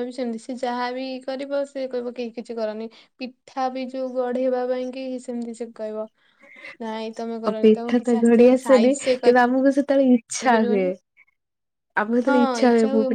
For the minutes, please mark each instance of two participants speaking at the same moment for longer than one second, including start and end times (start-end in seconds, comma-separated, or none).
7.5-9.2